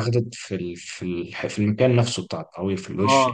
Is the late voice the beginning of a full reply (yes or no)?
yes